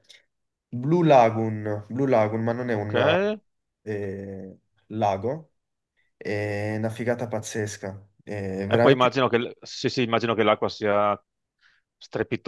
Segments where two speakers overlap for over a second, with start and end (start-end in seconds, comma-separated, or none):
none